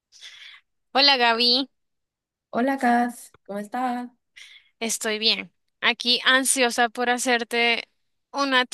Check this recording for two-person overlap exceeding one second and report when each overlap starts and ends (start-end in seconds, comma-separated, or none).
none